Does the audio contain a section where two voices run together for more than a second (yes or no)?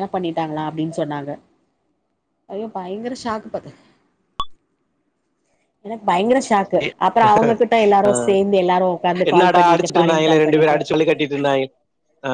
yes